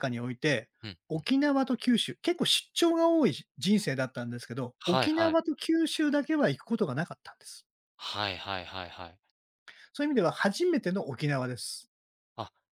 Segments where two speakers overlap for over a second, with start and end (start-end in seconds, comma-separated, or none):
none